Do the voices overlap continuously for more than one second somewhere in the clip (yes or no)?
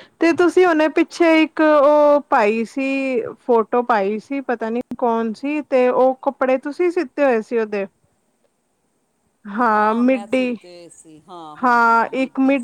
no